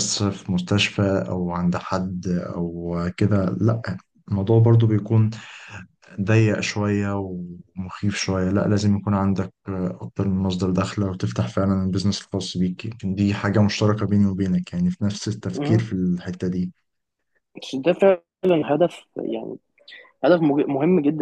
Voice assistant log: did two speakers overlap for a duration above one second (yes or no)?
no